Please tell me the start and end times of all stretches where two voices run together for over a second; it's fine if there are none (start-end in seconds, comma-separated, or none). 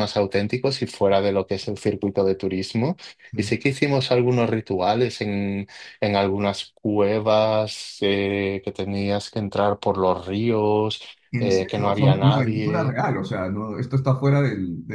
11.4-13.0